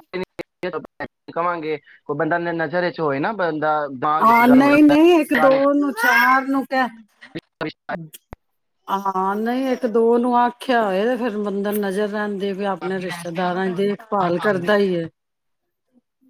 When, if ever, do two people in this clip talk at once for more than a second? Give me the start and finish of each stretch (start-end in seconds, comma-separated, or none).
12.8-14.7